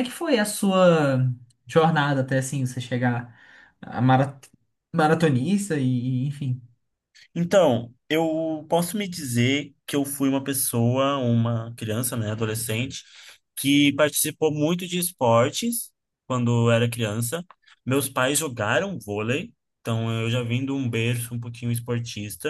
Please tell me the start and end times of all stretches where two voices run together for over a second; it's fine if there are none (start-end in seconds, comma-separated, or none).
none